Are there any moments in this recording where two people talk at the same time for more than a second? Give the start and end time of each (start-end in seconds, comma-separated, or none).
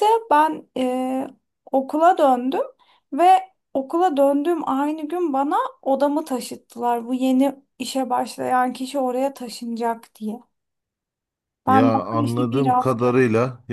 11.7-13.1